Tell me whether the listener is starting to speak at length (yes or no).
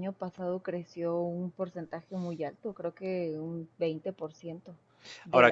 no